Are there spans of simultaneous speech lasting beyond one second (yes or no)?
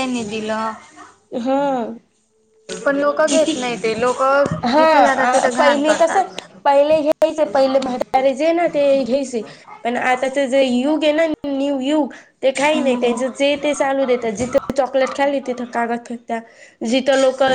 yes